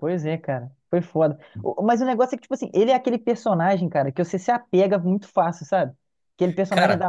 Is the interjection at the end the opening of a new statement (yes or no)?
no